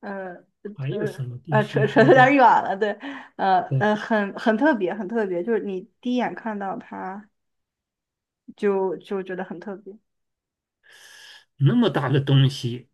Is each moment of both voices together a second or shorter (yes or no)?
no